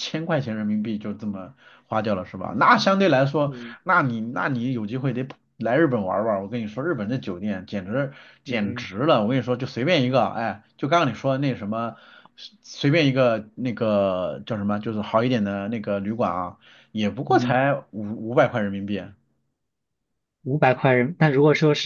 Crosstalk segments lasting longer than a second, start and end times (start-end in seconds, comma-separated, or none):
none